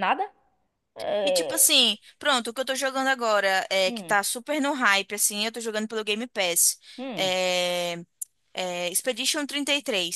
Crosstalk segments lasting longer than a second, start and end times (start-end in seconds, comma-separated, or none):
none